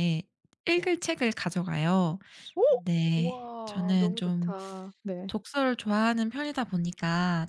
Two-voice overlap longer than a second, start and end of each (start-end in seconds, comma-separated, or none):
3.1-4.5